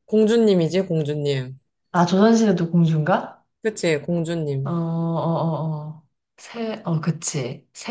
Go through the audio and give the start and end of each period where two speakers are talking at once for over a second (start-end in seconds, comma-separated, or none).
none